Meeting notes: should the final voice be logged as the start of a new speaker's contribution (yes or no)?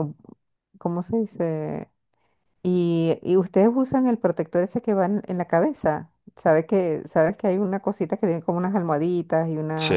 no